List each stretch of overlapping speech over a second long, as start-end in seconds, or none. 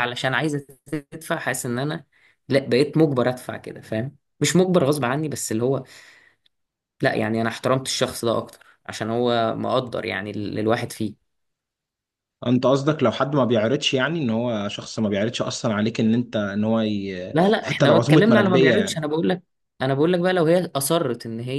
17.3-19.0